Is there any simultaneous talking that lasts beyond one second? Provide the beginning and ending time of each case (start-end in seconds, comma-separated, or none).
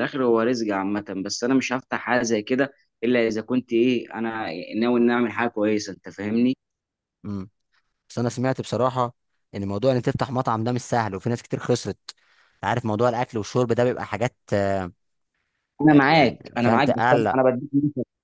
15.9-17.4